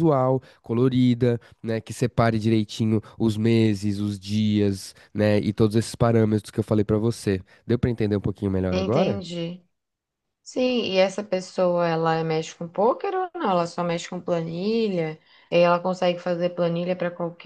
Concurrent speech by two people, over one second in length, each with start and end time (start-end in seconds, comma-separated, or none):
none